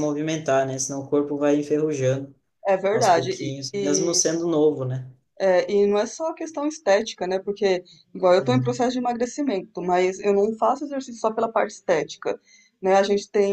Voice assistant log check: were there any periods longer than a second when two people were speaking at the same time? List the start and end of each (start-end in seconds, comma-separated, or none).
2.9-4.2